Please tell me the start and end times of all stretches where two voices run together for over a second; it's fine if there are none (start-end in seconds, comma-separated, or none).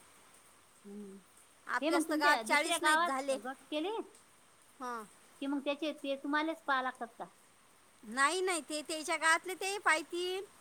1.8-3.4